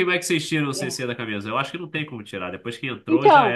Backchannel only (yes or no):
no